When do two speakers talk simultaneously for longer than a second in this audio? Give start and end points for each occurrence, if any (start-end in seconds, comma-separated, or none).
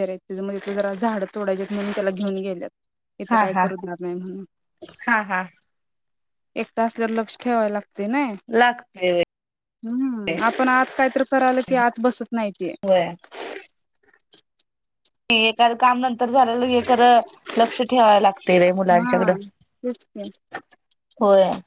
none